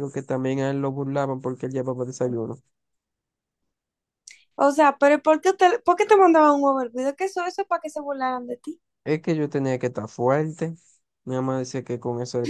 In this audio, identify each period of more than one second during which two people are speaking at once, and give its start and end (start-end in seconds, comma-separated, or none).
none